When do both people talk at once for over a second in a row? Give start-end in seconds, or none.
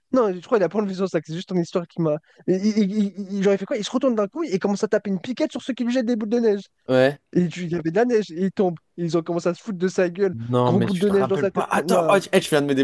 10.3-12.2